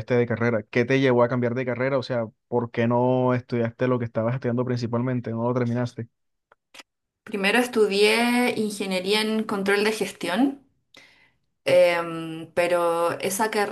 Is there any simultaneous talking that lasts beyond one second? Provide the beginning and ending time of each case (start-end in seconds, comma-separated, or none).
none